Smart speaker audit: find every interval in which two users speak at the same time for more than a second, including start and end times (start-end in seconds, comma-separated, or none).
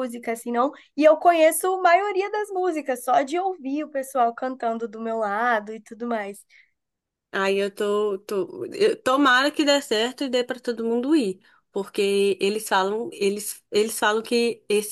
none